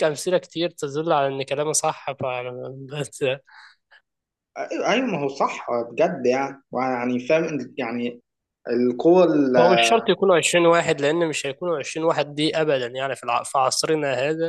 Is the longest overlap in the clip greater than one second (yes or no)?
no